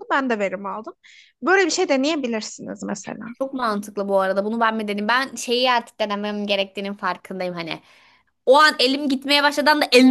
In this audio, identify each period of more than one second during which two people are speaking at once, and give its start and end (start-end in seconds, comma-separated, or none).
none